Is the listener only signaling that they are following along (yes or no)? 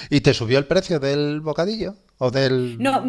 no